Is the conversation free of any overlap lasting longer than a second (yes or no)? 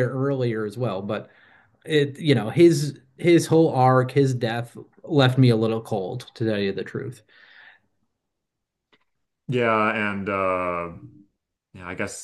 yes